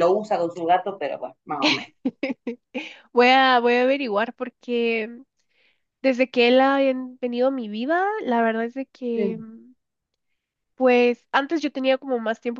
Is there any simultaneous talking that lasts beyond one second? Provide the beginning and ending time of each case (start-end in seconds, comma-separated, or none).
none